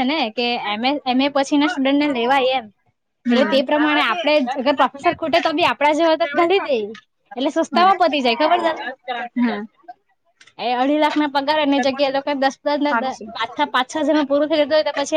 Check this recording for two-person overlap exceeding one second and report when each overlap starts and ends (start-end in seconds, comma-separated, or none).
3.3-5.1